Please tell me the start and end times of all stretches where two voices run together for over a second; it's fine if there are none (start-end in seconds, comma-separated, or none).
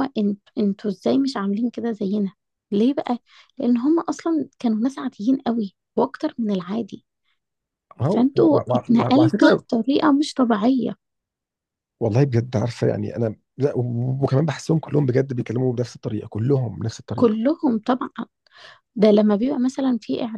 8.1-9.6